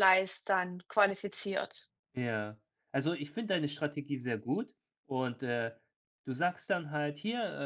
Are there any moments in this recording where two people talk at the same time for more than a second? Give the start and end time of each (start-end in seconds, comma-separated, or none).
none